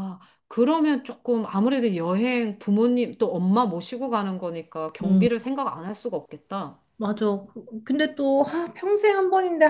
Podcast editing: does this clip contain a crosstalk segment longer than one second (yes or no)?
no